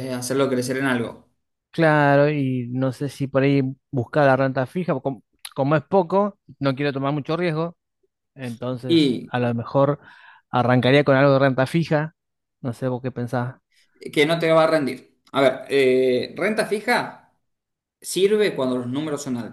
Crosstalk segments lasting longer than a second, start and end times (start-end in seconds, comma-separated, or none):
none